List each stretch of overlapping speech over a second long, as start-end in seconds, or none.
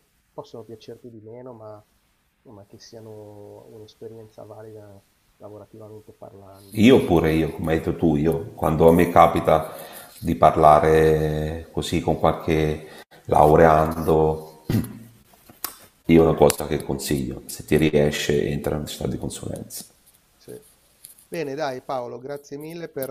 none